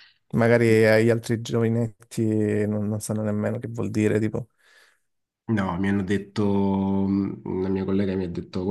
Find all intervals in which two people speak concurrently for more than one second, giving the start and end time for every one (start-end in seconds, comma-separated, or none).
none